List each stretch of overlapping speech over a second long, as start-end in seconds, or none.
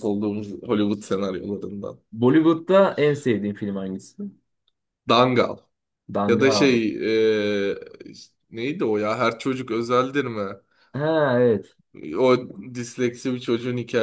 none